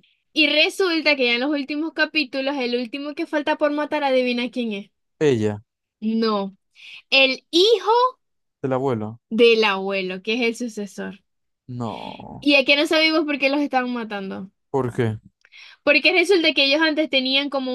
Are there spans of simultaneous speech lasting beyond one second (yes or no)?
no